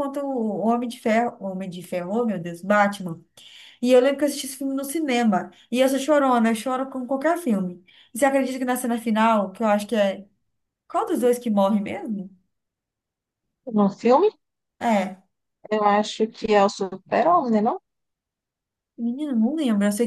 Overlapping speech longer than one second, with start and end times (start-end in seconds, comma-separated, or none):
none